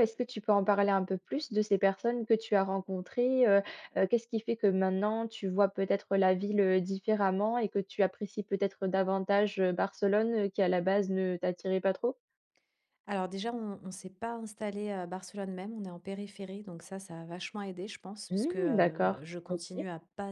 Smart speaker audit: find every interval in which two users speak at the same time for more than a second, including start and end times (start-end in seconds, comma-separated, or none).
18.3-19.6